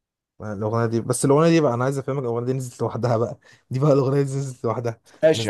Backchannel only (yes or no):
no